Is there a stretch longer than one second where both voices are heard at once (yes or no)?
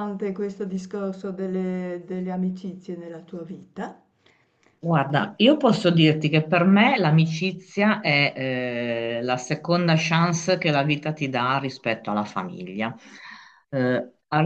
no